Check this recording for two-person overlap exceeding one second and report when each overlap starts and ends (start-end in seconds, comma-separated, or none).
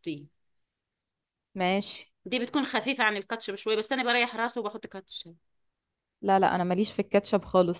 none